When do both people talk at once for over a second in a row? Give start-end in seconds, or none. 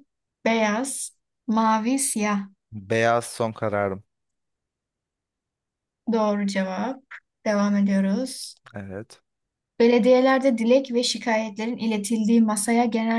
none